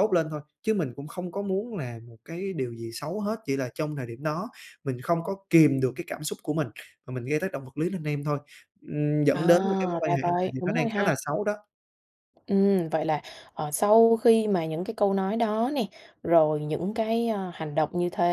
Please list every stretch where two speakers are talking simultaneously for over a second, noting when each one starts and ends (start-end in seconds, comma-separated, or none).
9.3-11.2